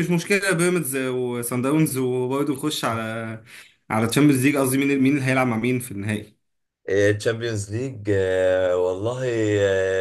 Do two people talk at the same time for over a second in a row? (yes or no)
no